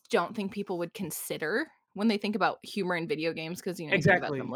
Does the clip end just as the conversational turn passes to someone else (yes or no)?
yes